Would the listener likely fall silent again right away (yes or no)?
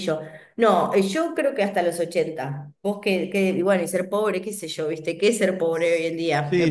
no